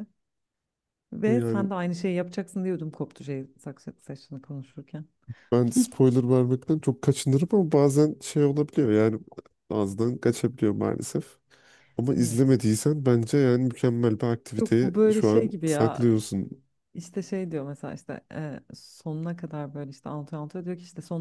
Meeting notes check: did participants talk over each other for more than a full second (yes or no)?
yes